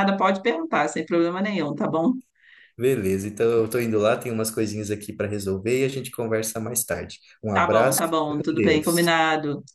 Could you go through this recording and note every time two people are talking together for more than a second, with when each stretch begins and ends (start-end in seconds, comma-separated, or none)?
7.5-9.1